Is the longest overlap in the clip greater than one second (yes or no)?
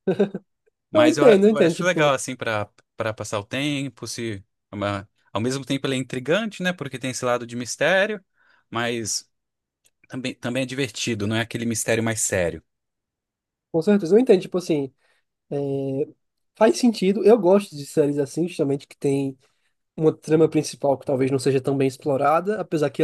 yes